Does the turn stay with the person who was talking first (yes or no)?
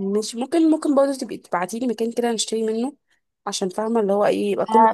no